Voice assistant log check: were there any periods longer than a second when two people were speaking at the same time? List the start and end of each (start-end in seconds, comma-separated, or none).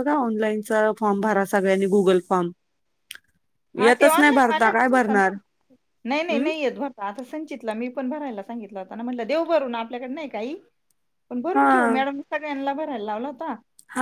3.8-5.3